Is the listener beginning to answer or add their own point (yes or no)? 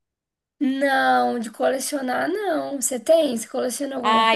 yes